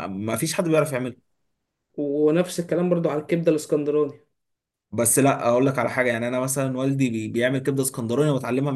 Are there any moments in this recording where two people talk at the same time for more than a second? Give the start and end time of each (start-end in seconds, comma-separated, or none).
none